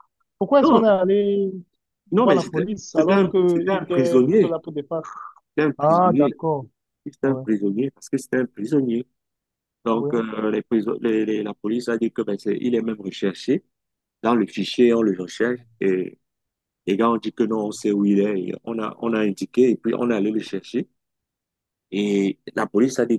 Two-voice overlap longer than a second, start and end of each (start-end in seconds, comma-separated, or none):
2.1-4.5